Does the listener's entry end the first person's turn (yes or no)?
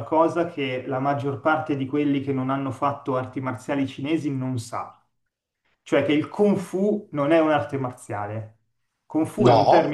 no